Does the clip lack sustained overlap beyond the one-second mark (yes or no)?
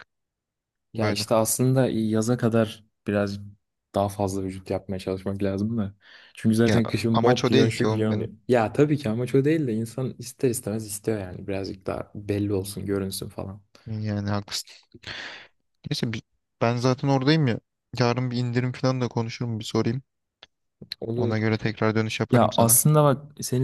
no